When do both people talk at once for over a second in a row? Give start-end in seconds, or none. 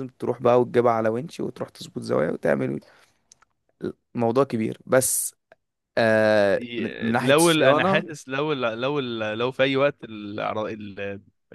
6.6-8.1